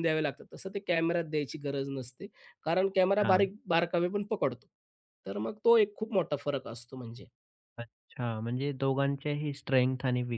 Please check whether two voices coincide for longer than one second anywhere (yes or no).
no